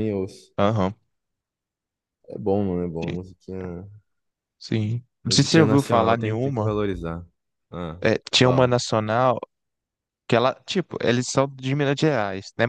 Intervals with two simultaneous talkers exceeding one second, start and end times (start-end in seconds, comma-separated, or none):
5.2-6.7